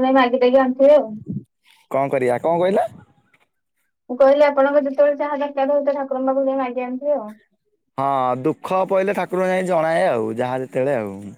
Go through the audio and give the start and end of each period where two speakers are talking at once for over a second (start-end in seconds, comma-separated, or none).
none